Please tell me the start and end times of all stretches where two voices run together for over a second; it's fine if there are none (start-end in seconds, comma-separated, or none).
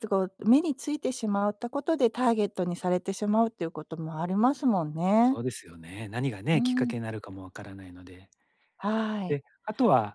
none